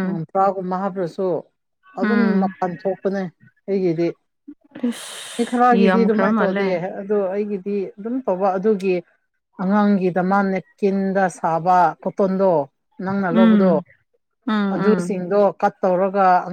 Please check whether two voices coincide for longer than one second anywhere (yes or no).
yes